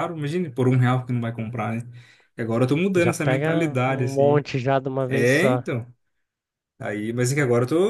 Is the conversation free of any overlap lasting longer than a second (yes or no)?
no